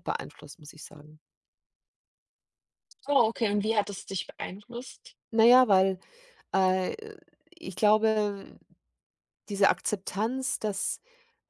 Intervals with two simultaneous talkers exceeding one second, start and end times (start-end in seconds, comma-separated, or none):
none